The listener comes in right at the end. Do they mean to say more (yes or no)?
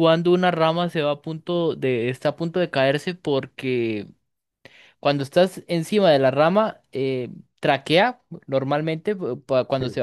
no